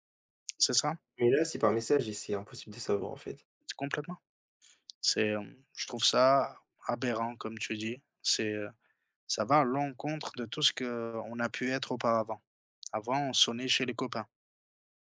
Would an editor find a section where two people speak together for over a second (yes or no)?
no